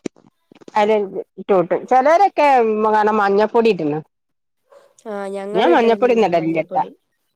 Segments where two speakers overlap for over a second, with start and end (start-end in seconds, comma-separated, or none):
5.6-6.8